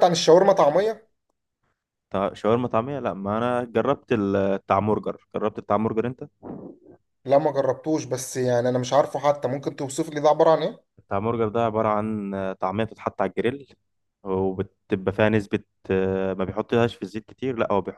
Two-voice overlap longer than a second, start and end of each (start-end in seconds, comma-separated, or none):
none